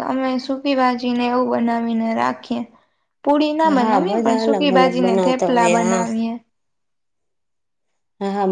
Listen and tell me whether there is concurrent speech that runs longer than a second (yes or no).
yes